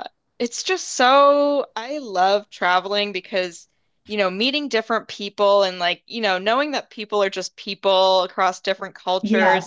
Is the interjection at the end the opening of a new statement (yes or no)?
no